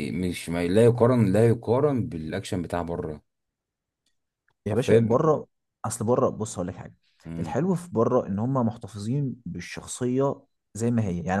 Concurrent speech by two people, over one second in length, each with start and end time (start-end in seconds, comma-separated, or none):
none